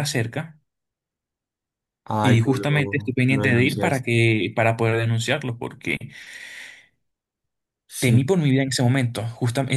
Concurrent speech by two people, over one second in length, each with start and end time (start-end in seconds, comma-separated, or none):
2.2-4.0